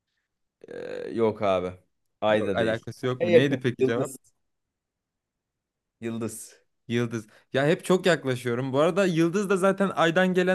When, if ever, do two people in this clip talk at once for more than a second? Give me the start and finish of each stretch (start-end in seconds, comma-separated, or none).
2.3-4.1